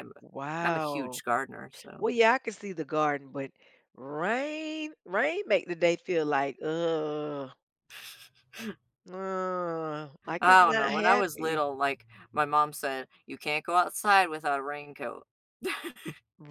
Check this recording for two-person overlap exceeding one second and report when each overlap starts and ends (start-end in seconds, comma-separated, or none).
10.4-11.6